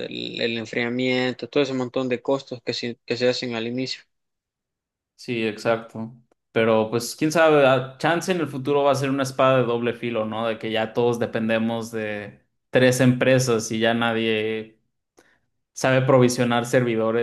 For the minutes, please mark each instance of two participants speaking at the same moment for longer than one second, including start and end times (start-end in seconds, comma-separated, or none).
none